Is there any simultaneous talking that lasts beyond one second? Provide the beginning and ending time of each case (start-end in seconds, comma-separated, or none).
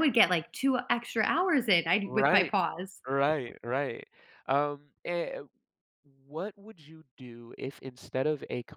none